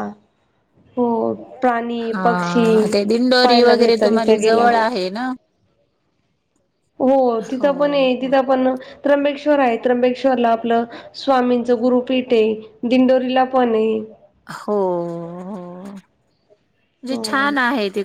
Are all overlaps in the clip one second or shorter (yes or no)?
no